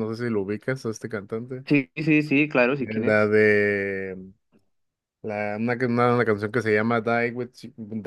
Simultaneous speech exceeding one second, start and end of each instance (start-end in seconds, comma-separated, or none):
none